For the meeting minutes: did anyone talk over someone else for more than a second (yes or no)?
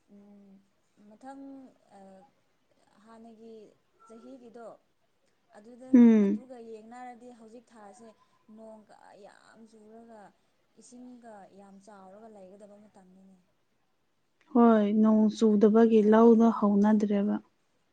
yes